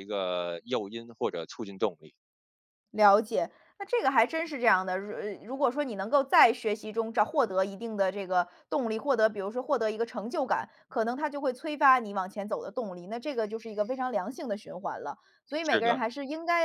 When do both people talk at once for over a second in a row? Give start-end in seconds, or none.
none